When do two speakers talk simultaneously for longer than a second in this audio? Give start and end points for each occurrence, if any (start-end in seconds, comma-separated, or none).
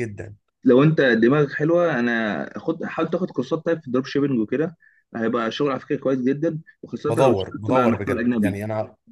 7.1-8.6